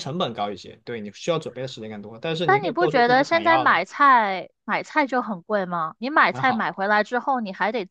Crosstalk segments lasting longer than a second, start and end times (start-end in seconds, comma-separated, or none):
2.4-3.8